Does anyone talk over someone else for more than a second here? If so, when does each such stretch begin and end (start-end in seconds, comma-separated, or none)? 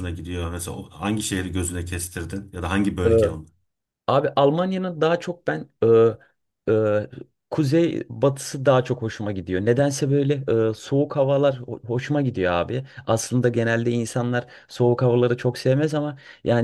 none